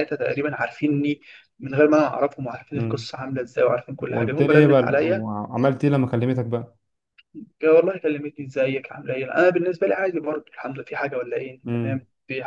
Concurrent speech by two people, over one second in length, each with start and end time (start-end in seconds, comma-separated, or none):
4.0-5.2